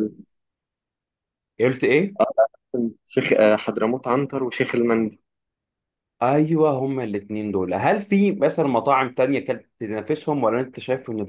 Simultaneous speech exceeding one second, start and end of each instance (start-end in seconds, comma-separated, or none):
none